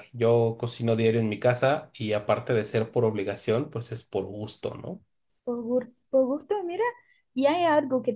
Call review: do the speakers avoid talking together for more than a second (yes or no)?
yes